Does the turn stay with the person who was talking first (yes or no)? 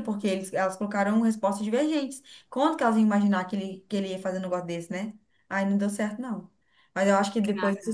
yes